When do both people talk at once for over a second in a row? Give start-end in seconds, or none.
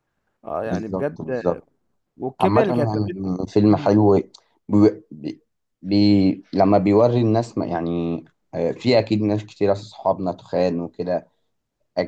2.4-4.0